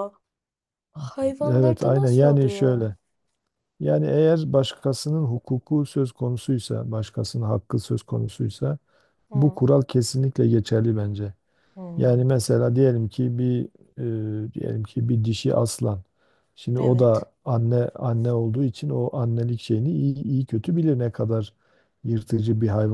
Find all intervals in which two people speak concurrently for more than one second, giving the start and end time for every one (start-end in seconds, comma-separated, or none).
1.5-2.9